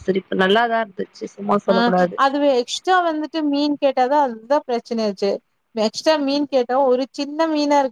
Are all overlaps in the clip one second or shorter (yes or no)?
yes